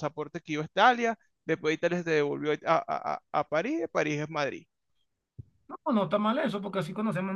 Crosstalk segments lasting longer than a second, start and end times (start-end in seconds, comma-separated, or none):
none